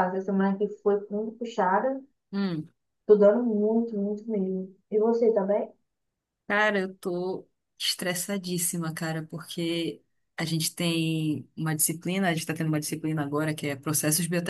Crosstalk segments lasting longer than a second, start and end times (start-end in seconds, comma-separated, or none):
none